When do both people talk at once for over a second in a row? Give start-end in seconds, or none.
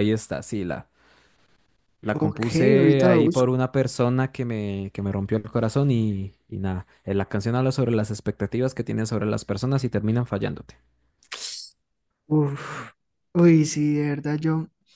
2.1-3.6